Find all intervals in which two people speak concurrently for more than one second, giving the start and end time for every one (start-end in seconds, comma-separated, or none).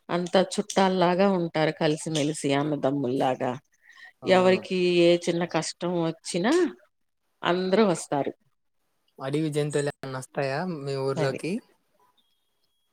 none